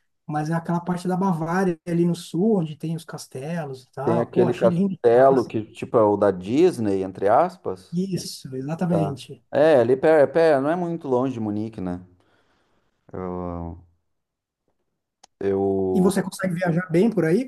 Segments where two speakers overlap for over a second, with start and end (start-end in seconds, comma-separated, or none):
4.0-5.5